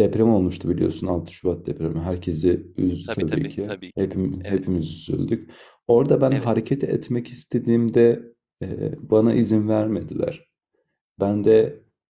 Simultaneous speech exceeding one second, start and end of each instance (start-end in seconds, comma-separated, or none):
3.0-4.6